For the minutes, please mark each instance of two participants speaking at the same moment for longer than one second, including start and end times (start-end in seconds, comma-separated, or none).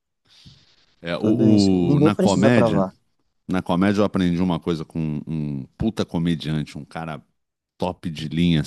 1.2-2.8